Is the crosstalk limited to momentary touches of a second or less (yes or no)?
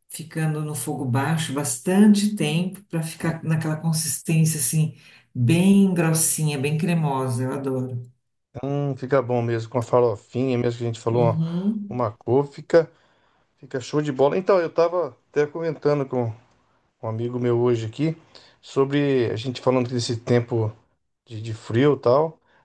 yes